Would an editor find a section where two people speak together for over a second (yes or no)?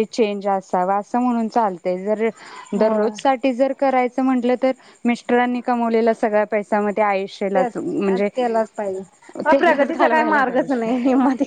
yes